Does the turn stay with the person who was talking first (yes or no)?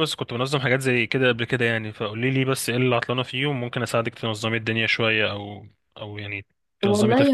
no